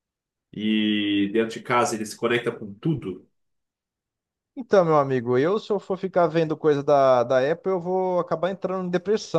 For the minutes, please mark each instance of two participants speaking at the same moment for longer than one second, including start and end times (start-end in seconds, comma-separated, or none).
none